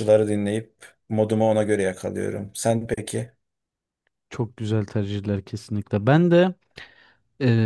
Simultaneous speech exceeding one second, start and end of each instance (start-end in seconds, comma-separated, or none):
none